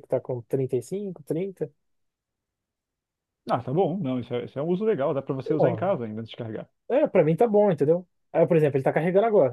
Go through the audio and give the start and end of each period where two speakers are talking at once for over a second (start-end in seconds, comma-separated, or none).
none